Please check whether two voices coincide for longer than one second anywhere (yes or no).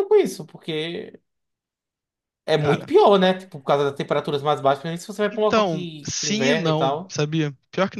yes